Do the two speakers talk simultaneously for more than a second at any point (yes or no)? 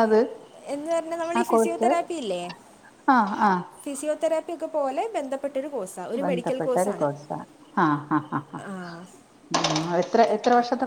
no